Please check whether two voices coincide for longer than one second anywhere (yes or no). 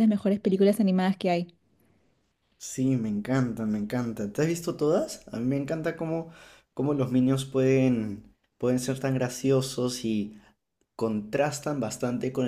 no